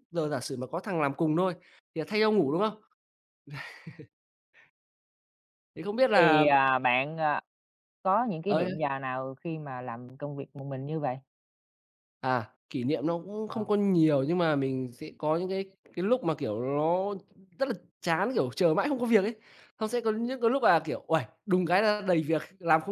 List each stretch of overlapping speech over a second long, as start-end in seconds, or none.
none